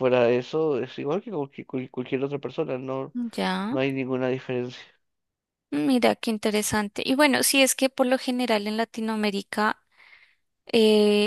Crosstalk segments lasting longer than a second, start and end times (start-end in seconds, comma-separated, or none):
none